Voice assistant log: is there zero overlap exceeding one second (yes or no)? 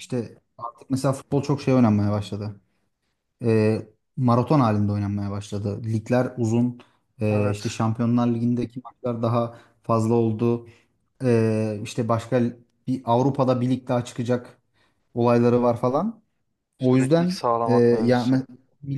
no